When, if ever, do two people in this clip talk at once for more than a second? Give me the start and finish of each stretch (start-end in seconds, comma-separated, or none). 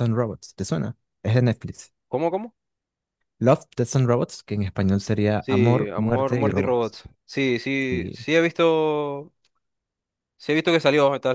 5.4-7.0